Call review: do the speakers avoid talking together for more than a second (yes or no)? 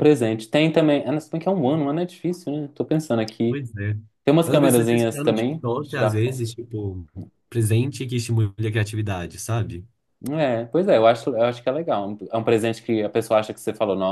no